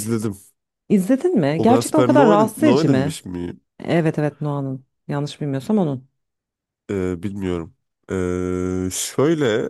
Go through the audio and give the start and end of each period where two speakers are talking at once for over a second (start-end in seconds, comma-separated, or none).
1.6-3.2